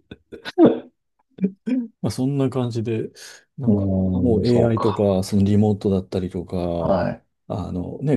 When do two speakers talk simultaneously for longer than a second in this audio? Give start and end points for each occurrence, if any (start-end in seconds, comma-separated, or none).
3.7-5.1